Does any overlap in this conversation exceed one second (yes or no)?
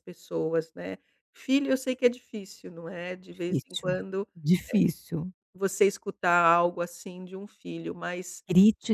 no